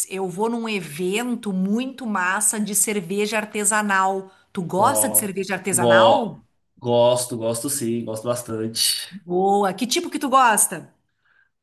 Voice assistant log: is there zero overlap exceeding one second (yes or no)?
no